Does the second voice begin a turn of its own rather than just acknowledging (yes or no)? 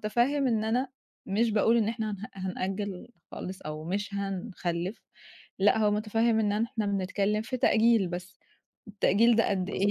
no